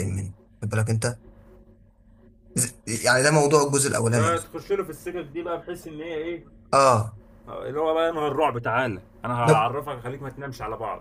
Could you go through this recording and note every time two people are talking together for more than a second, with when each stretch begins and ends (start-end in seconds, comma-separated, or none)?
none